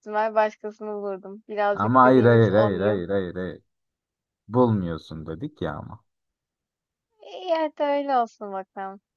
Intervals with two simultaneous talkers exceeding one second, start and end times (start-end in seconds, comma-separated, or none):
1.7-3.0